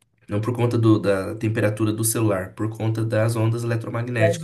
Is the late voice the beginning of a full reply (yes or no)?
yes